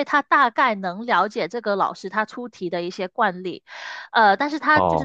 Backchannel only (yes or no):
yes